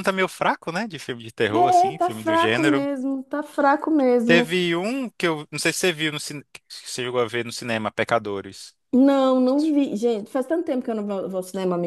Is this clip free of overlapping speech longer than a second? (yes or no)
no